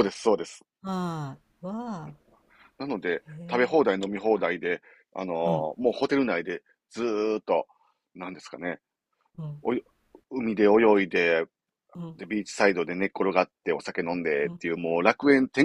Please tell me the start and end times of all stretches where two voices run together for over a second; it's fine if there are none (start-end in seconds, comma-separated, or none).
none